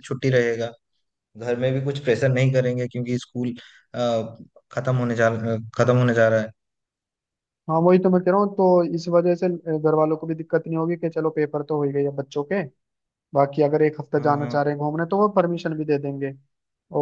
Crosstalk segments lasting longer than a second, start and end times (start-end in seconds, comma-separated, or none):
none